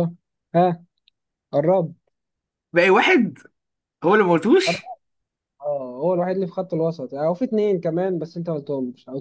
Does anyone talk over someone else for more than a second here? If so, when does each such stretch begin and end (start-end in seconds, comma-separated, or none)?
none